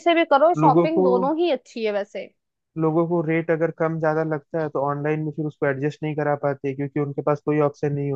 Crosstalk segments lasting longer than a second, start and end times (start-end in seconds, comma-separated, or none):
none